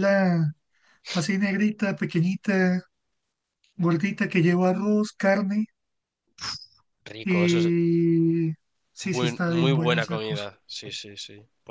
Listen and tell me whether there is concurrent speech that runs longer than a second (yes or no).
yes